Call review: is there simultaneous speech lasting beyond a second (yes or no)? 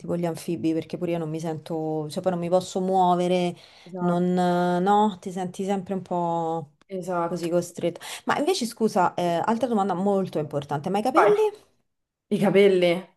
no